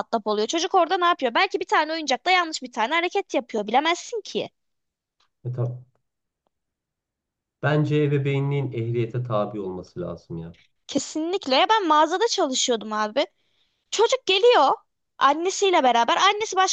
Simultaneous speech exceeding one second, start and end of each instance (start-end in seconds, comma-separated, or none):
none